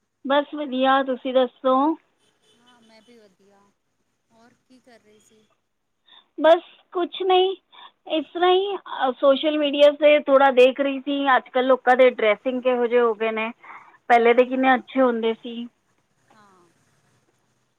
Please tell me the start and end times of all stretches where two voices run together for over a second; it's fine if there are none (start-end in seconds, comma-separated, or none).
none